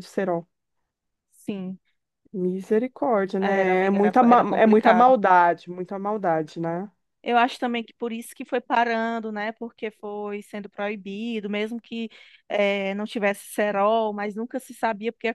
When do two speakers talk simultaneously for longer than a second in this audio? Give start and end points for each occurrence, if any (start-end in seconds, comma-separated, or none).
3.4-5.1